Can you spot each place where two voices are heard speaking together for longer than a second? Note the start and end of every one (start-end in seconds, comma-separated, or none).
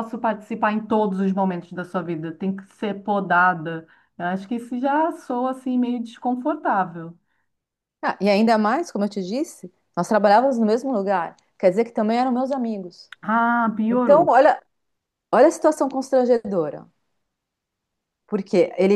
none